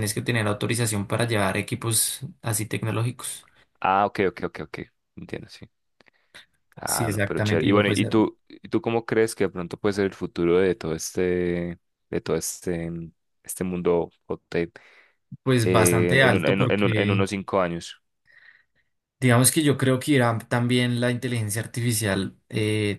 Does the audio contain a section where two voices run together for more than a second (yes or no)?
yes